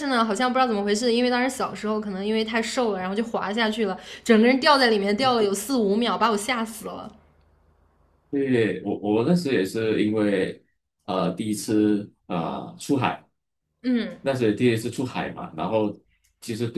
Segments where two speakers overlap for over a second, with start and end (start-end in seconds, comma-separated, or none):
none